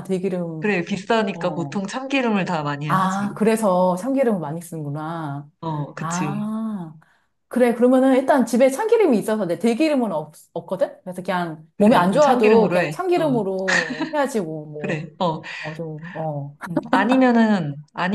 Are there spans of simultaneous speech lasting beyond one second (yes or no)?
yes